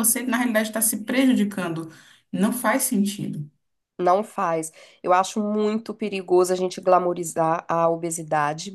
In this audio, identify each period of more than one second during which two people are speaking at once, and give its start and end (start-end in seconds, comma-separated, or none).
none